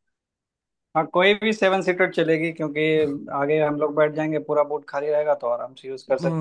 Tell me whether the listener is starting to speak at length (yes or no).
yes